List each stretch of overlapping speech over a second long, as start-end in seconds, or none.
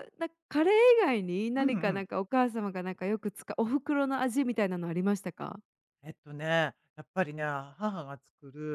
none